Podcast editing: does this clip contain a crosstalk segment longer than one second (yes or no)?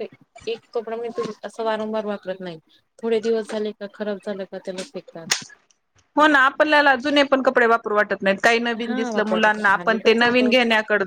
yes